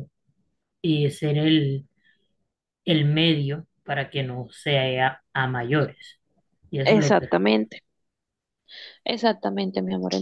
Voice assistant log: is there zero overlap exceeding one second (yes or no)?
yes